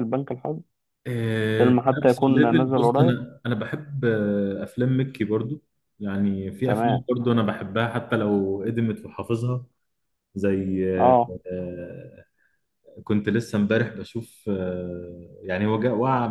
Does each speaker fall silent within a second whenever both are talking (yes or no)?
no